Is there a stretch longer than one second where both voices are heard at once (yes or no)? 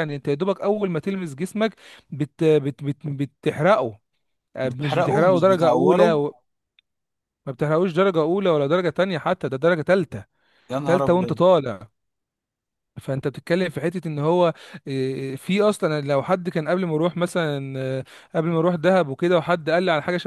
yes